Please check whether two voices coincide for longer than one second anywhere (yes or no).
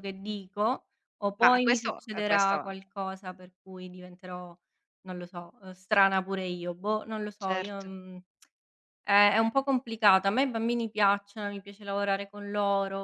yes